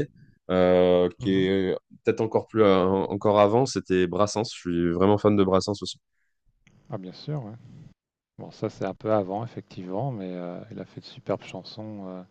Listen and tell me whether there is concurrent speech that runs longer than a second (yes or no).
no